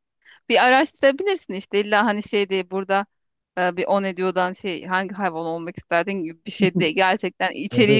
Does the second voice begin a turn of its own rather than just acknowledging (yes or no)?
no